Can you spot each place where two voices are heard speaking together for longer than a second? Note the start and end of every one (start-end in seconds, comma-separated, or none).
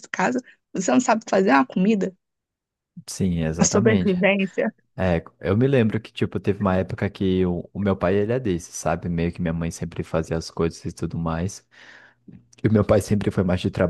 none